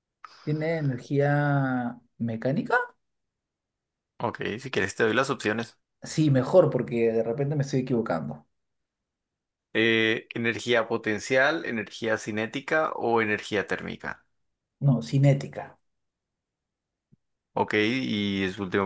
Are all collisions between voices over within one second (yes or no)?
yes